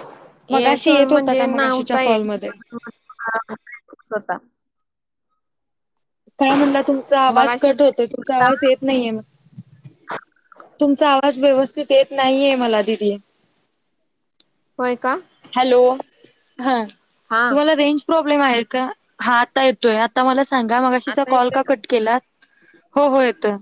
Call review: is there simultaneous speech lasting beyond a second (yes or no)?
yes